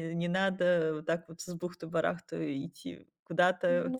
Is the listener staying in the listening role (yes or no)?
yes